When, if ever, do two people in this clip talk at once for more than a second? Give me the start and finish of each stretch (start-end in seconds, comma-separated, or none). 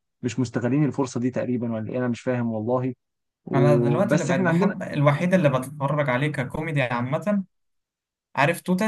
3.5-4.7